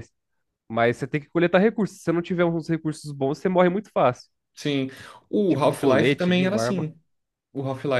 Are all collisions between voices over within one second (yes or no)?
no